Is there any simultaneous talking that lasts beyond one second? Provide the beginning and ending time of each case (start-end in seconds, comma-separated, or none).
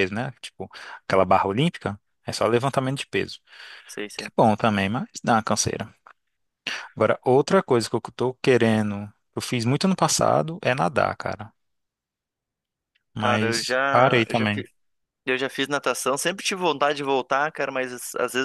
13.2-14.6